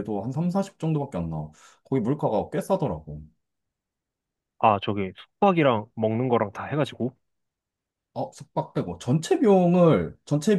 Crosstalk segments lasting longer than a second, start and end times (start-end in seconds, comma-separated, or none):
none